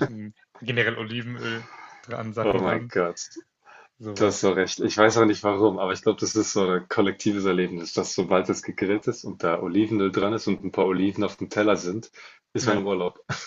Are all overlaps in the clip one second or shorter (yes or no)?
yes